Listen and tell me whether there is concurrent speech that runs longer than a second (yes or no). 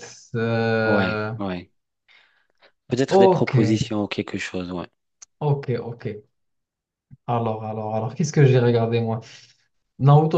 no